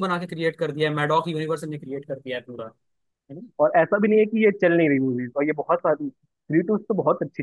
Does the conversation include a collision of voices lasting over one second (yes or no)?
no